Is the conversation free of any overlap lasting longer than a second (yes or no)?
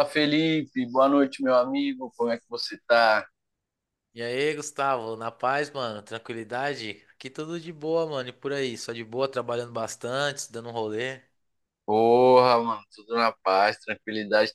yes